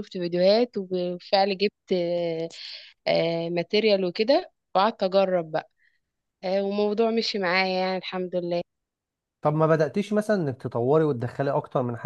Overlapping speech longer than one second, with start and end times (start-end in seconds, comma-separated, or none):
none